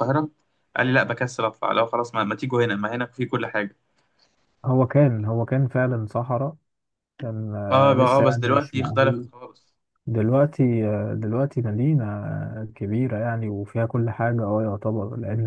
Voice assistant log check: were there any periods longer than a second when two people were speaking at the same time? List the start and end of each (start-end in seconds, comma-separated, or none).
7.7-9.3